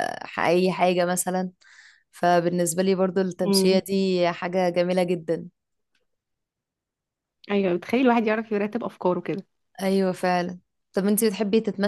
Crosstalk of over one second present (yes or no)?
no